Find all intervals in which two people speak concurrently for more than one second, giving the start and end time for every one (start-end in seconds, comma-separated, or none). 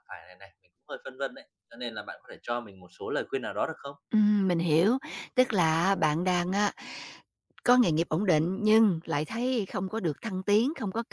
none